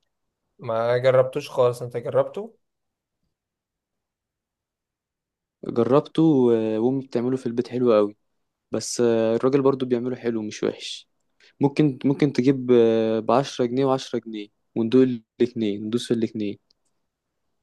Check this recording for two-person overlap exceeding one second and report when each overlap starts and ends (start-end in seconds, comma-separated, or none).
none